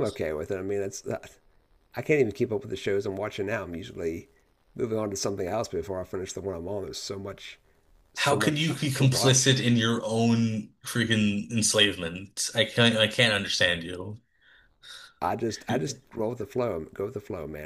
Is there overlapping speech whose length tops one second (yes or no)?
yes